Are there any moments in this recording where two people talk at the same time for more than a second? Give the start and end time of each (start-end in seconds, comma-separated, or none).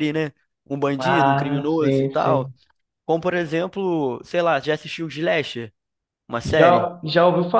1.0-2.5